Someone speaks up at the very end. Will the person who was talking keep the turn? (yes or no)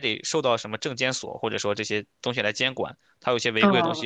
yes